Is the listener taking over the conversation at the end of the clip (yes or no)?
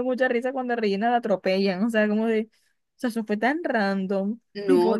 no